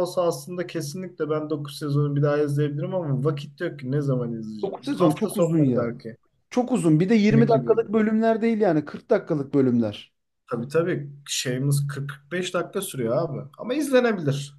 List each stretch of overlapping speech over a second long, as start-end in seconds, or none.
4.6-5.9